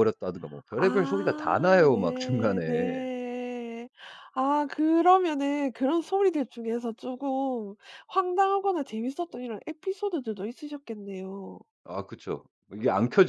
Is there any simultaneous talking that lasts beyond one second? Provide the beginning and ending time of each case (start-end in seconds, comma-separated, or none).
0.8-3.0